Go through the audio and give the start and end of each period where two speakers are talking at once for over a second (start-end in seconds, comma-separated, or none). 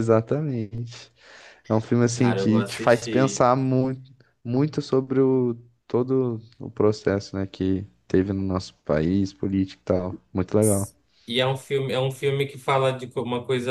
2.1-3.5